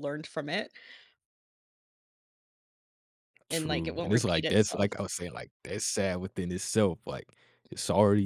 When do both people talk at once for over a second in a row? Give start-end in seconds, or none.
3.5-4.9